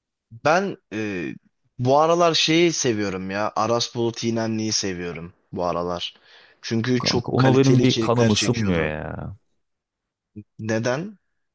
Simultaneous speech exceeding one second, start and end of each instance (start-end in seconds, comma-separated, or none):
7.0-8.9